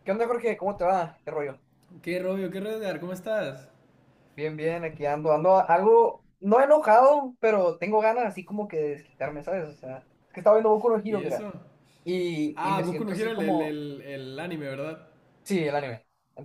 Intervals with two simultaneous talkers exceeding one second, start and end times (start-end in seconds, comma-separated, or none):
12.6-13.8